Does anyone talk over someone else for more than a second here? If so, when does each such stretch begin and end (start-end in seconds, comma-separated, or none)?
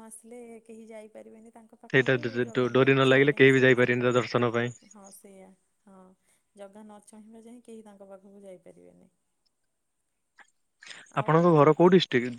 2.8-4.7